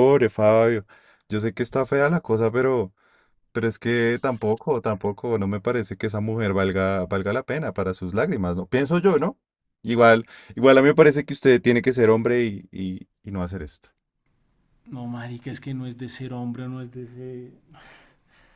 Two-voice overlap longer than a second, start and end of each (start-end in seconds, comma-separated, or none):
none